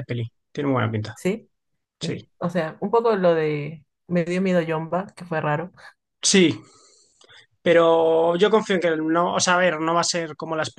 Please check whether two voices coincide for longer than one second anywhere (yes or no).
no